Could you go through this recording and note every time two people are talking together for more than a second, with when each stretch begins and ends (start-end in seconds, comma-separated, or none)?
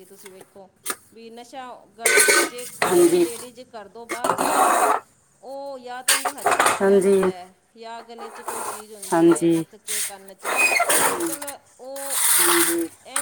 none